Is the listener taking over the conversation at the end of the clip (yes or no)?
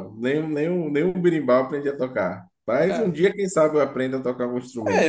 yes